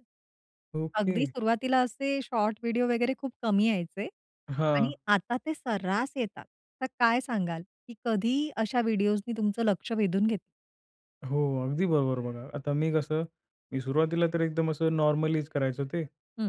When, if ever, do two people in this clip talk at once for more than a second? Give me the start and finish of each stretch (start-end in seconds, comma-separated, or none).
none